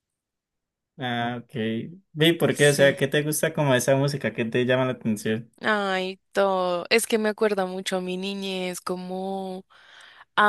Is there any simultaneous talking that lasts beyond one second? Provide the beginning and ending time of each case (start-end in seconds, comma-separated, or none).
none